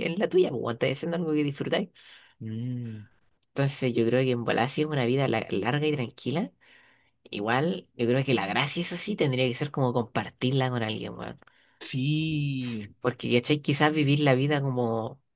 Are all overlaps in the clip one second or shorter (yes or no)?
yes